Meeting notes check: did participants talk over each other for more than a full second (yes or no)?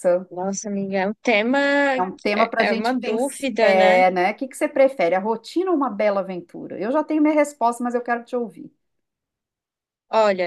yes